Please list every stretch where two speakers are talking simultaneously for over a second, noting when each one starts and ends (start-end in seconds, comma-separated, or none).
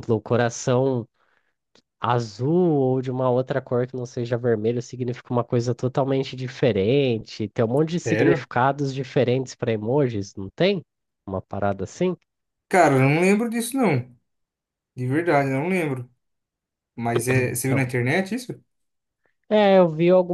none